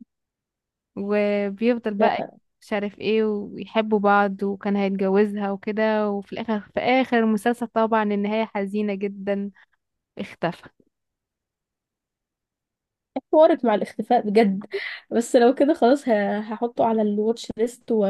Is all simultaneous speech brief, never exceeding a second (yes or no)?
yes